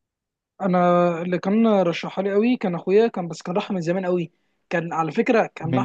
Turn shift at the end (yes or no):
no